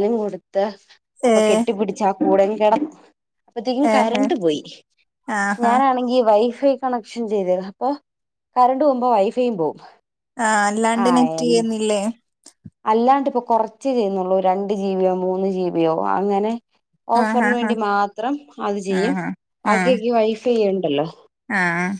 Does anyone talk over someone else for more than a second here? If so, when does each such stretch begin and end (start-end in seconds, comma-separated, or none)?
none